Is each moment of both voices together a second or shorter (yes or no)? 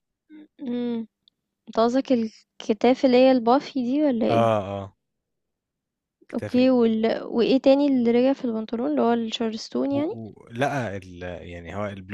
yes